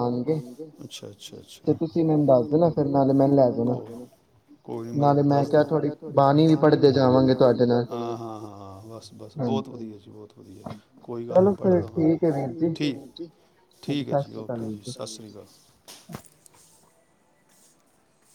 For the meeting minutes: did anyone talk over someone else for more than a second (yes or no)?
yes